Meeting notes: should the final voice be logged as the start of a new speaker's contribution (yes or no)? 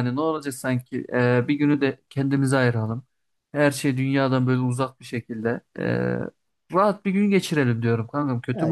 yes